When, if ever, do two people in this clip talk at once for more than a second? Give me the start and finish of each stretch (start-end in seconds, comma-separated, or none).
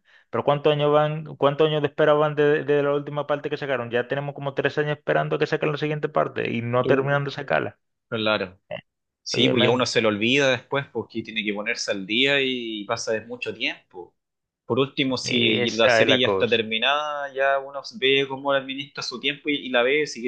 15.2-16.6